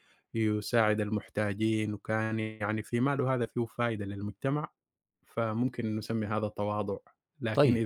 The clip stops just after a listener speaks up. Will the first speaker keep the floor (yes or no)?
yes